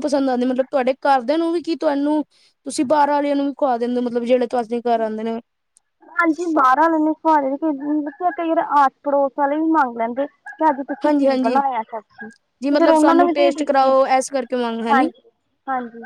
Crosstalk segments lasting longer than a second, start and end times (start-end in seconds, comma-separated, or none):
12.6-13.9